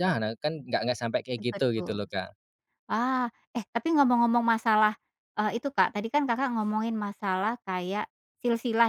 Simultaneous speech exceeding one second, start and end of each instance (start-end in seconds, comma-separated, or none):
none